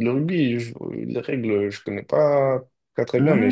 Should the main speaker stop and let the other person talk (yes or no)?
no